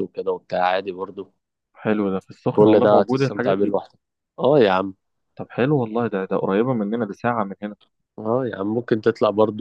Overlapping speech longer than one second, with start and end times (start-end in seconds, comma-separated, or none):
2.5-3.8